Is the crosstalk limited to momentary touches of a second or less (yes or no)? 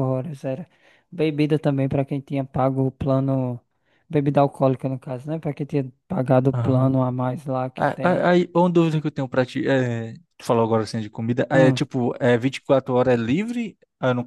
yes